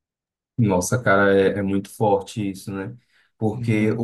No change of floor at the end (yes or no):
yes